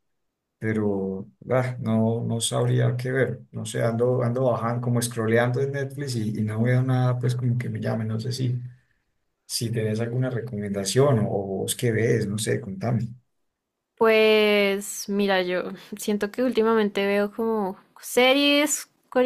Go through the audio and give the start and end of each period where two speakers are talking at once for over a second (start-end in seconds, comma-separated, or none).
none